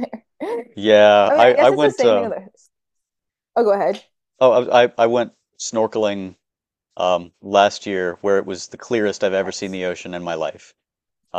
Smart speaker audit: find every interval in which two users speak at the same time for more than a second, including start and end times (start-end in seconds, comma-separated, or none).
0.8-2.3